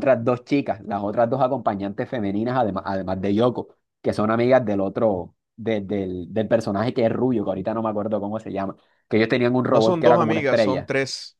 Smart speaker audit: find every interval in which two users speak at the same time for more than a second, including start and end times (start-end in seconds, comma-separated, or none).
9.7-10.9